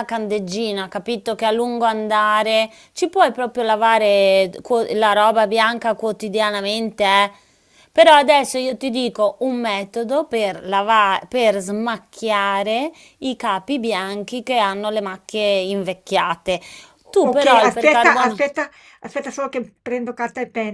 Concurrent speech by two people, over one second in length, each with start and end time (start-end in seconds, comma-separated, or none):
17.1-18.4